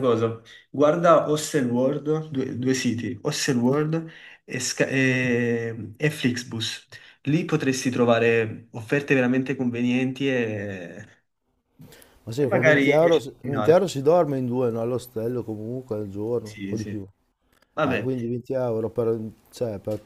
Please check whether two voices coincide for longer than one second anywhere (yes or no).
yes